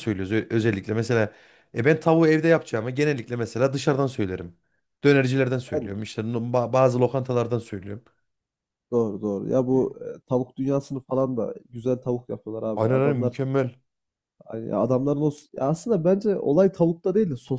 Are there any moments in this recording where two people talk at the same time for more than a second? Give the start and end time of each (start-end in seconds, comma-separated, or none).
none